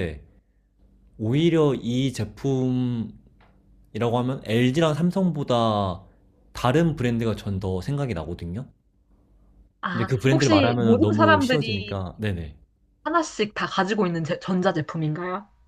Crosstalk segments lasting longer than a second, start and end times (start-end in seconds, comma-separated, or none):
9.9-12.0